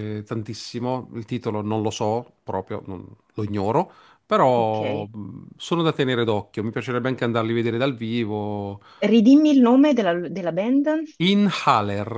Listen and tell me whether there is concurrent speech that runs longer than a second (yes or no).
no